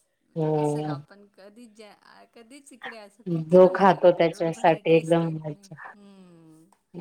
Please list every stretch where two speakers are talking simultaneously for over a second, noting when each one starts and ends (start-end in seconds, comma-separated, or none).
3.5-5.7